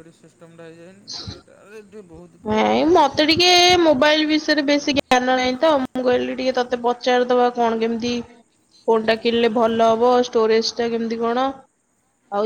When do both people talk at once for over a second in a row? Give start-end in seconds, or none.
none